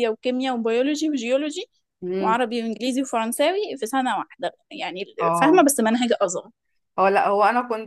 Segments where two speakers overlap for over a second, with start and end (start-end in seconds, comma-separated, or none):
none